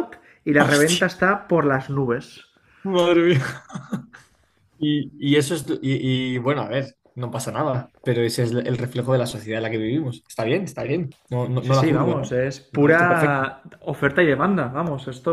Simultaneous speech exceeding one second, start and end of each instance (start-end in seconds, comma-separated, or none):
11.7-13.4